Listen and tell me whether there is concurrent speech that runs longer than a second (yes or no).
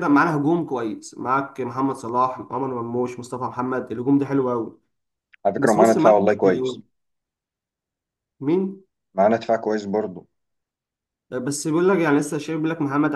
yes